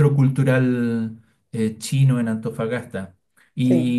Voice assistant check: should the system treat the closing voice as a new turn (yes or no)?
no